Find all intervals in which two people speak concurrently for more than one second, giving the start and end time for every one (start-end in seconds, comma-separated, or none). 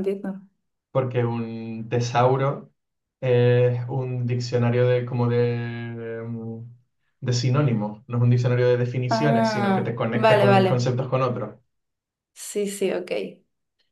9.1-10.9